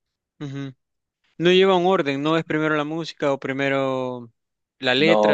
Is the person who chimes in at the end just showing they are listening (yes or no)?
no